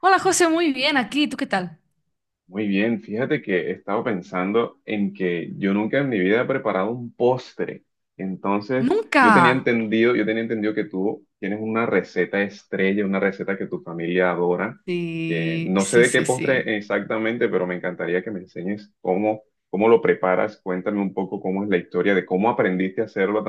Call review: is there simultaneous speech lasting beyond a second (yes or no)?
yes